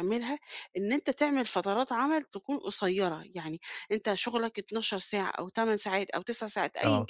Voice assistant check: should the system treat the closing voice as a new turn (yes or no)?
no